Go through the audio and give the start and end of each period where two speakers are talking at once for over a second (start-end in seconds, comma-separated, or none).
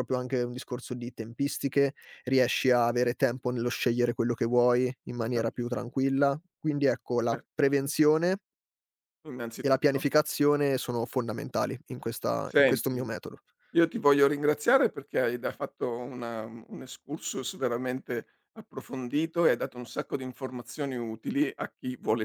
none